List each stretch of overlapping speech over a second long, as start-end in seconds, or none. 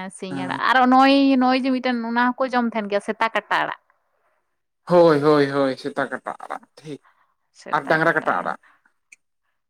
none